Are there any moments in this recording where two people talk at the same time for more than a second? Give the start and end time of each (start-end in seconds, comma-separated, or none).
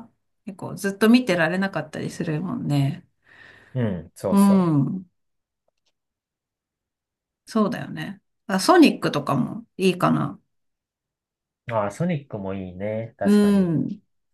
none